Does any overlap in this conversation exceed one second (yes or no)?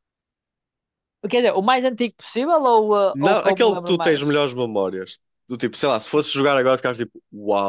yes